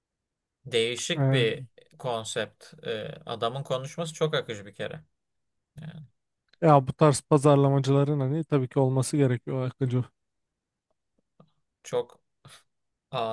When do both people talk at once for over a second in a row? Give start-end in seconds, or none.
none